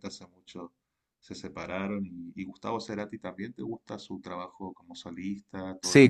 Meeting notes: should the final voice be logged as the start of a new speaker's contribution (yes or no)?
yes